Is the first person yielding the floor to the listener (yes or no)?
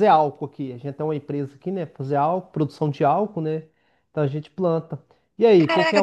yes